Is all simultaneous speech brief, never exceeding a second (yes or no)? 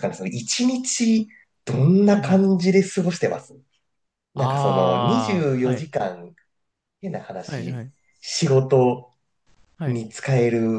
no